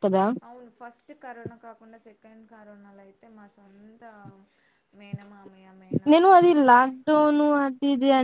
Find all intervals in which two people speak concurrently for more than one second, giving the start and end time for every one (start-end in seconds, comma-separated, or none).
none